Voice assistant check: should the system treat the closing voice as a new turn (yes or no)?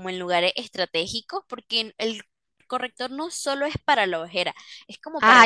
yes